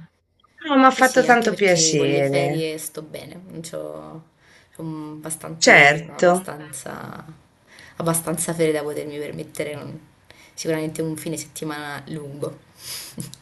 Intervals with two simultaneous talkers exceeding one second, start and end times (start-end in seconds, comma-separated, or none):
0.9-2.7